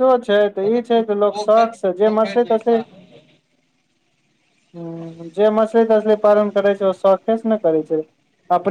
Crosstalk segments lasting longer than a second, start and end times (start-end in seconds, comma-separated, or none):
0.6-2.7